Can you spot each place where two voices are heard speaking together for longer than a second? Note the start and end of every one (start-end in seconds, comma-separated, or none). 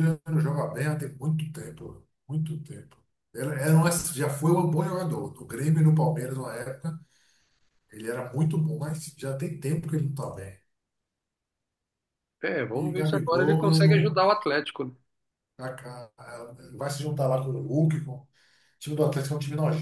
12.7-14.2